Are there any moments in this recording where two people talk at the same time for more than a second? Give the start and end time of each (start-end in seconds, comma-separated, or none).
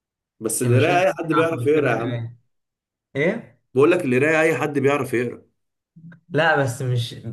0.6-2.2